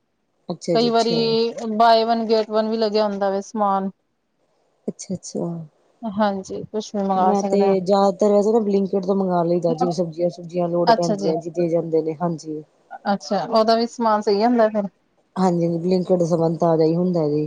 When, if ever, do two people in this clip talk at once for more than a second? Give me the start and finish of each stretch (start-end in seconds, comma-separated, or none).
none